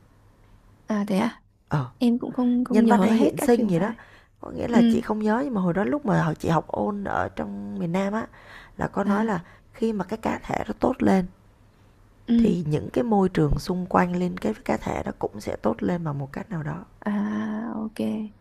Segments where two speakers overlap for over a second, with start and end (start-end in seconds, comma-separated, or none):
2.7-3.9